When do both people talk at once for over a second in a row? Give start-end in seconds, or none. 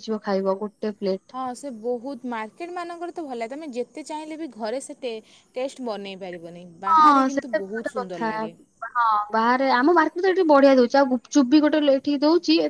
6.9-8.3